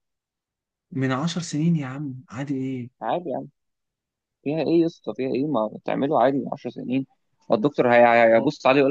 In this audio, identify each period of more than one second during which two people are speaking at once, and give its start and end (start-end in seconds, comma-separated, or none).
none